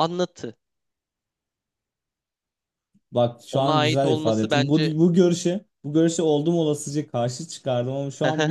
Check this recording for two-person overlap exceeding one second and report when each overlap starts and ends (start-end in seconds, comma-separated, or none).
3.5-4.9